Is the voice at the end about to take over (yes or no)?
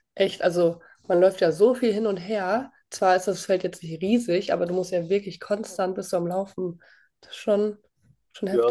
yes